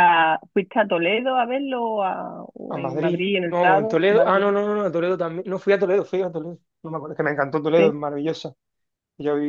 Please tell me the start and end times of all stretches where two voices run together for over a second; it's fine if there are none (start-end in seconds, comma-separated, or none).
2.7-4.5